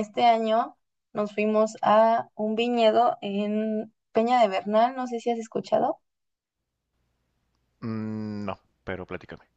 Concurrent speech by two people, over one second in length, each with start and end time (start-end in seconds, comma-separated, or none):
none